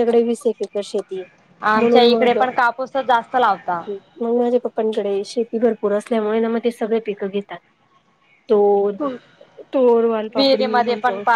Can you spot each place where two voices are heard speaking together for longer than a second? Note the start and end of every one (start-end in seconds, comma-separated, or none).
none